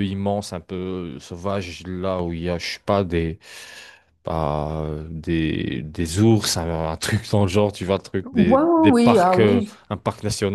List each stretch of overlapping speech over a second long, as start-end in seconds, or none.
8.2-9.7